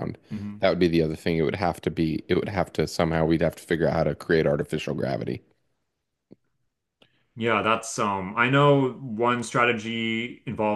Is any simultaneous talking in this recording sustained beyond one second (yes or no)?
no